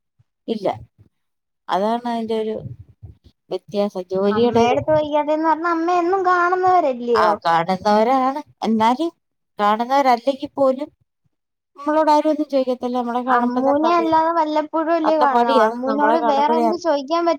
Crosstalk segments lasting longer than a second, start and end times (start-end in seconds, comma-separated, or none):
15.1-16.9